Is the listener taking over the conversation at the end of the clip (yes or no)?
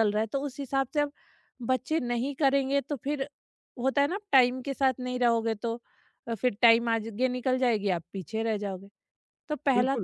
yes